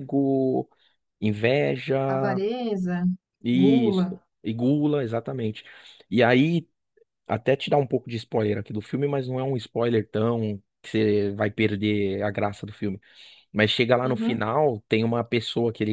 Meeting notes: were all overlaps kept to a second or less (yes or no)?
yes